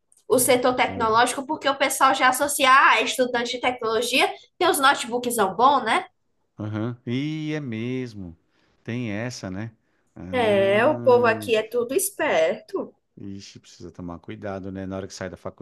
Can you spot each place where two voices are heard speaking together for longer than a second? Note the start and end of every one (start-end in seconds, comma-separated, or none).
10.3-11.5